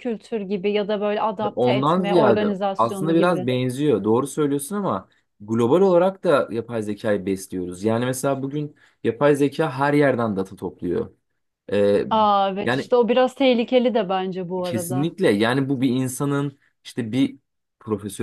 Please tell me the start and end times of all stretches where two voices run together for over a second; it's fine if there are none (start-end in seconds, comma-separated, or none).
1.6-3.5